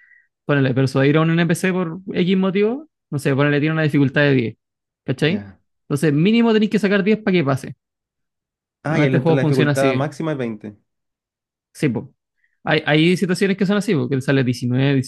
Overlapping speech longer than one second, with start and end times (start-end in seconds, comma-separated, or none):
8.8-10.1